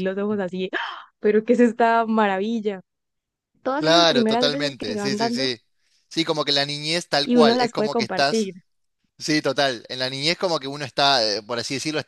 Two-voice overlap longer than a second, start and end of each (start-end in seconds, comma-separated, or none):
3.8-5.5, 7.2-8.5